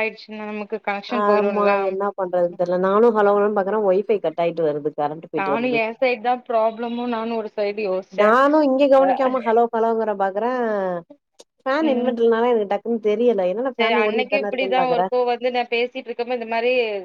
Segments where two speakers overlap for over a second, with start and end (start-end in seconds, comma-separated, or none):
13.8-15.0